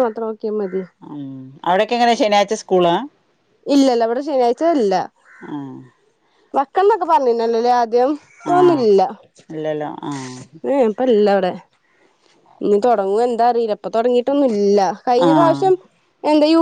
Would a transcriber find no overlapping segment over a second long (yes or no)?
yes